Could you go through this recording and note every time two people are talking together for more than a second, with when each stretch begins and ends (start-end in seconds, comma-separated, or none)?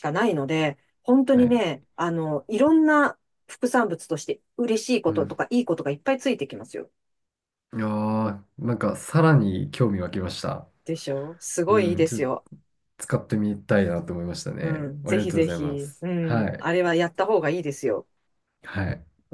14.6-16.7